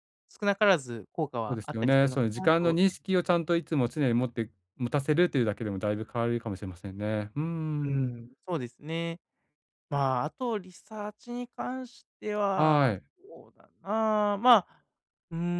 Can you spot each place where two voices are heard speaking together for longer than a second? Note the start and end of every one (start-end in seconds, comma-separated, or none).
1.5-2.8